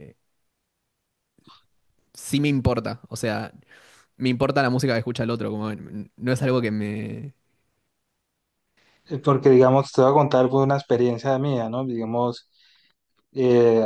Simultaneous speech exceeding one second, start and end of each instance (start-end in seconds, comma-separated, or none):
none